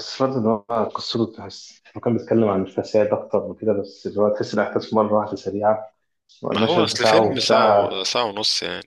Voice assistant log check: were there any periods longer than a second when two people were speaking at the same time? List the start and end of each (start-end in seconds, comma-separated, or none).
6.5-7.9